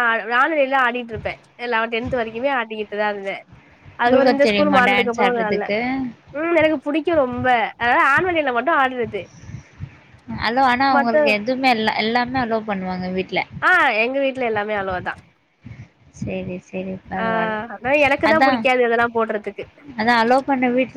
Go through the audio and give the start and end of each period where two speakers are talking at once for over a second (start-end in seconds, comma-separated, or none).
4.0-5.7